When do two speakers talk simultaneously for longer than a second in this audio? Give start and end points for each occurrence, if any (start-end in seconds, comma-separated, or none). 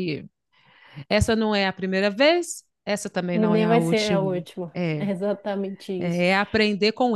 3.3-5.1